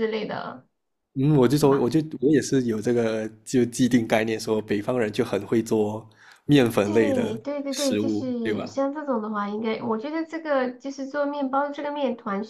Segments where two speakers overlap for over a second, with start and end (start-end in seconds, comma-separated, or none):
6.8-8.8